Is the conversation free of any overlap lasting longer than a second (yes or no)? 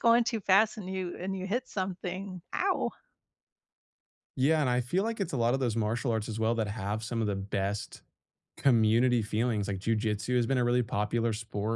yes